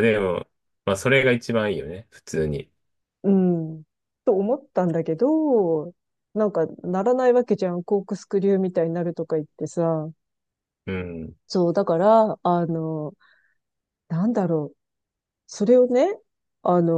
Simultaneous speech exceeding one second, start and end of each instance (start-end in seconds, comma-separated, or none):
none